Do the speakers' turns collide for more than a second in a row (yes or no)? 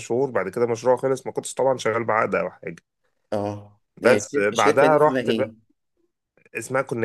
yes